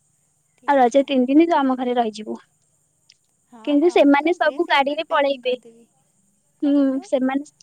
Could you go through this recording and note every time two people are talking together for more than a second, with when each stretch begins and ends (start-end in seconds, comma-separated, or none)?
3.7-5.5